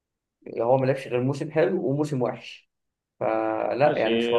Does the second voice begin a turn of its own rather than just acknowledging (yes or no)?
yes